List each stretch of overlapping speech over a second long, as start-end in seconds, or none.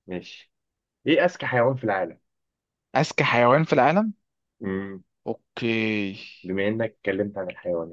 none